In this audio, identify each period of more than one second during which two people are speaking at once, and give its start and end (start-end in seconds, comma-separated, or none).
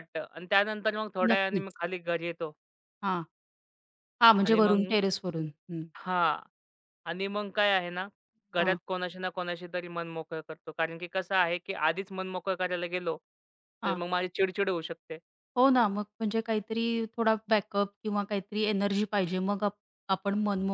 none